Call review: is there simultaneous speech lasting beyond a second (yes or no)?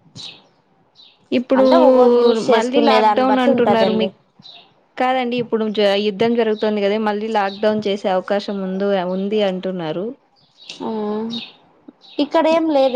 yes